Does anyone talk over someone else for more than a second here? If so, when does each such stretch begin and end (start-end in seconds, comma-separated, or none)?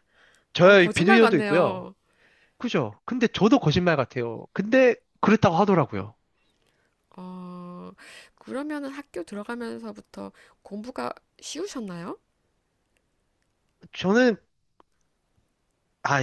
0.6-1.9